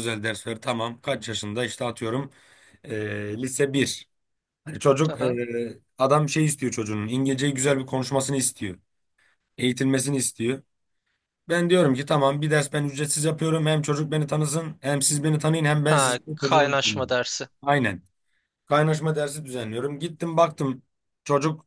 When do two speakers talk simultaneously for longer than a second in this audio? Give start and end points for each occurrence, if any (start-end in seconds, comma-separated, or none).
15.8-17.2